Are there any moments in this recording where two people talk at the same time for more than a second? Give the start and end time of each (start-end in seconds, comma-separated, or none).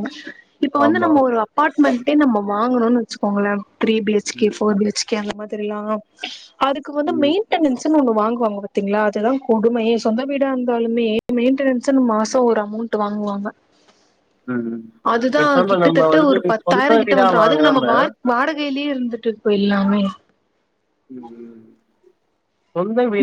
15.4-17.8